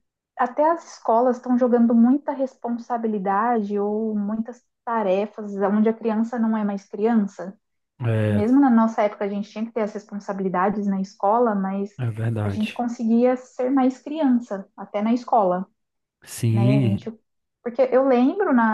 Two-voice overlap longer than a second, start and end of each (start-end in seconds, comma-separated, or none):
none